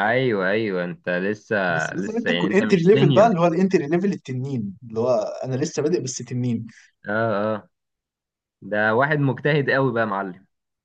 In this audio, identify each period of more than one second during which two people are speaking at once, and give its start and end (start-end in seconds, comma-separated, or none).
1.9-3.3